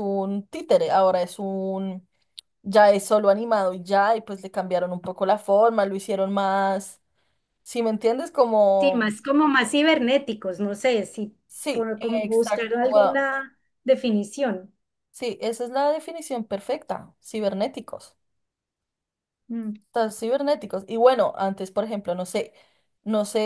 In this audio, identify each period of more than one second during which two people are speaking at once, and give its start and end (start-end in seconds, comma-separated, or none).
11.7-13.3